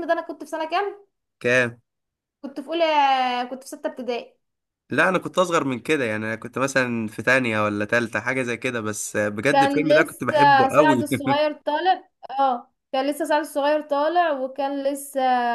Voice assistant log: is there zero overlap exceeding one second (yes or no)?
no